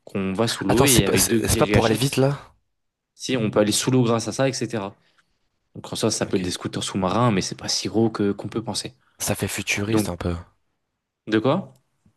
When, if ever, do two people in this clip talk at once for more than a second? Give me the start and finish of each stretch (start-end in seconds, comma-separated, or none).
0.7-2.2